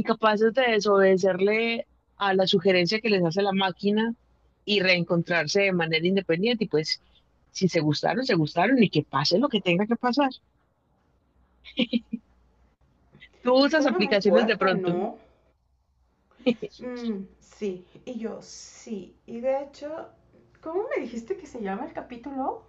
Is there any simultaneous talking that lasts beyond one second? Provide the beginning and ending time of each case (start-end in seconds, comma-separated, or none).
13.6-15.0